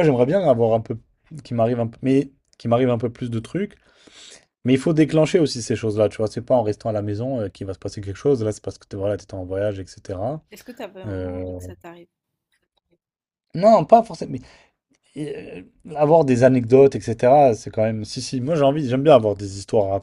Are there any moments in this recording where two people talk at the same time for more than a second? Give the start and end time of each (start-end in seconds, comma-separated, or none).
none